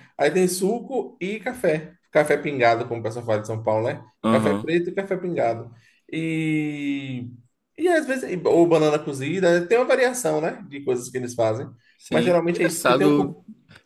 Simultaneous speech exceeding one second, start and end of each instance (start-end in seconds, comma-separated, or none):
12.1-13.3